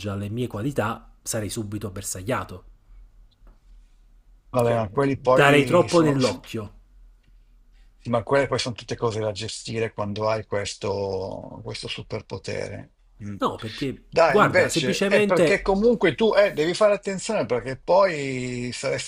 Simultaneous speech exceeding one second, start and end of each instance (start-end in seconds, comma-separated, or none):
4.6-6.4, 14.1-15.6